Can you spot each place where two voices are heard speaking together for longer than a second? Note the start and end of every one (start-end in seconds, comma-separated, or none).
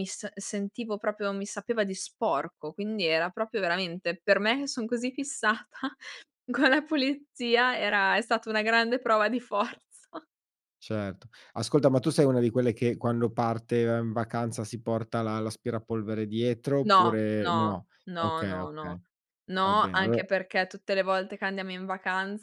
16.8-19.0